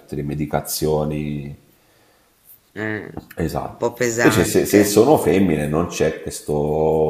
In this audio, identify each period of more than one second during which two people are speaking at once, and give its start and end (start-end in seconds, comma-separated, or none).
3.4-5.0